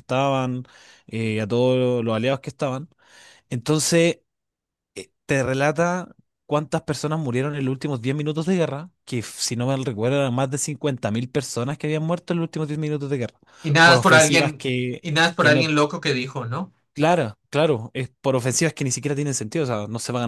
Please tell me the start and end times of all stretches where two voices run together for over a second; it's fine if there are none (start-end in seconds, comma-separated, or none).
13.8-15.7